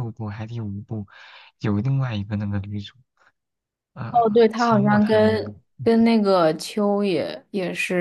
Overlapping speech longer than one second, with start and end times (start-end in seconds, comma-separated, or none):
4.1-5.9